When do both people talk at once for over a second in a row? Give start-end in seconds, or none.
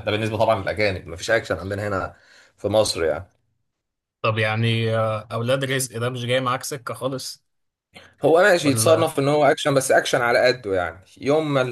none